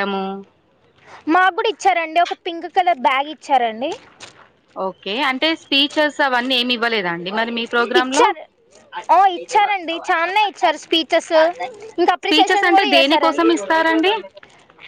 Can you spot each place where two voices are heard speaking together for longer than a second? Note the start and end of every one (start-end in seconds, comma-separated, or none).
12.2-13.5